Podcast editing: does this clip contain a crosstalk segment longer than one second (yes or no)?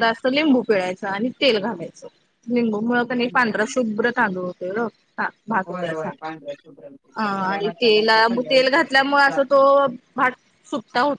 yes